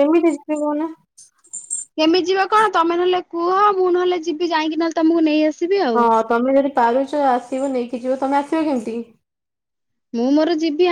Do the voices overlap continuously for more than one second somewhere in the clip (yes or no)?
no